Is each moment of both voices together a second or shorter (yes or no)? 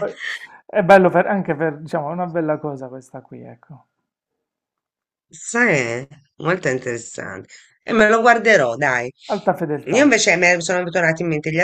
yes